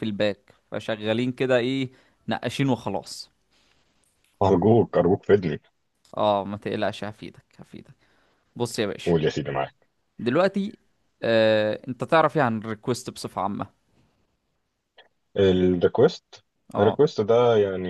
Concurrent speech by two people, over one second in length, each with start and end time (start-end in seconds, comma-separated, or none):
none